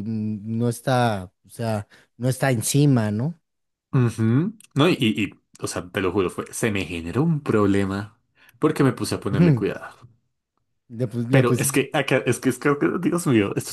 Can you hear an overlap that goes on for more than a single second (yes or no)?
no